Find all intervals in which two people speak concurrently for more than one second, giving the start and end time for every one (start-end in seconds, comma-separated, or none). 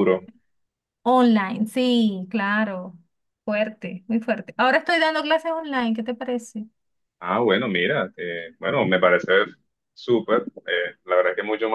none